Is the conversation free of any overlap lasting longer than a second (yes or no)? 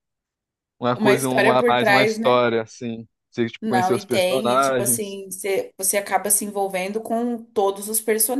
no